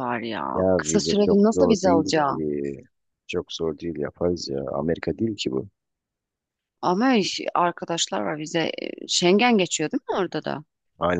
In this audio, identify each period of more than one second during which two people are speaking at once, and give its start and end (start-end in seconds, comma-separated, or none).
0.5-2.4